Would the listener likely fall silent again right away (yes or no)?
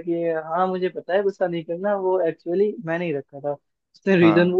yes